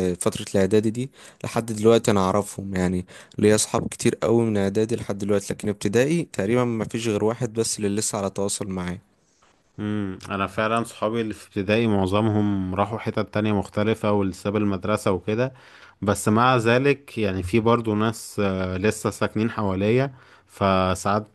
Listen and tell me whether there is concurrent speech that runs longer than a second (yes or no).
no